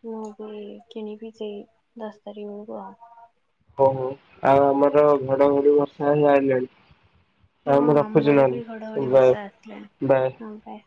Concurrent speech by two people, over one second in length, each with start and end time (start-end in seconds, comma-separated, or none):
7.7-9.3